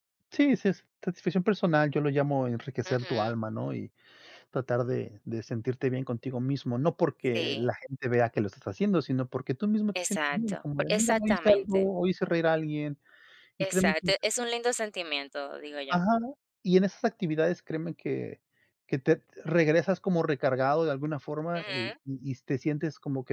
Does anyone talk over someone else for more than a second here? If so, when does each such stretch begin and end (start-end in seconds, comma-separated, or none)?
9.9-11.9